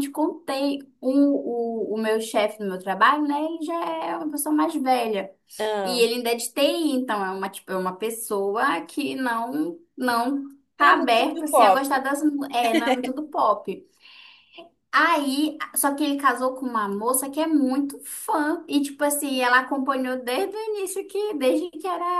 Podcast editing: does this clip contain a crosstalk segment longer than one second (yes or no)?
yes